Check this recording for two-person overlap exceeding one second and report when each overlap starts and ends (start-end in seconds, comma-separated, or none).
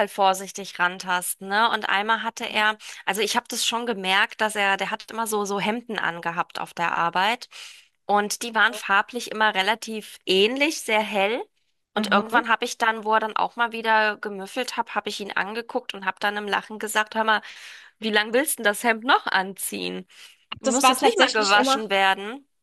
20.6-21.8